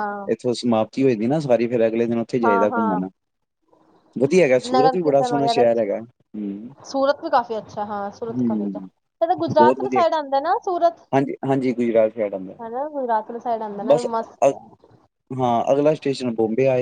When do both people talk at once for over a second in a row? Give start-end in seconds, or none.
none